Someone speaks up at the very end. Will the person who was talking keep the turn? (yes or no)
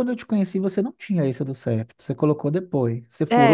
no